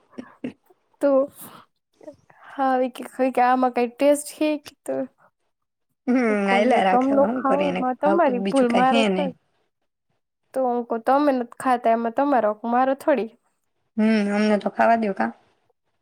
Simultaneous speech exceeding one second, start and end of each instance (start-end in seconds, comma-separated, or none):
6.5-9.3